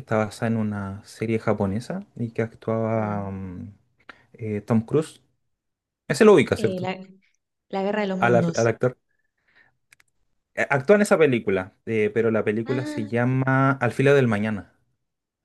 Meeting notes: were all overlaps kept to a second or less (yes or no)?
yes